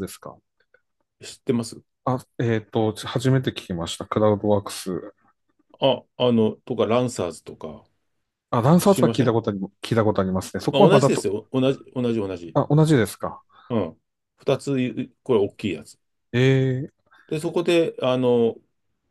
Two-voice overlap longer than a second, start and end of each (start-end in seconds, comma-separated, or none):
none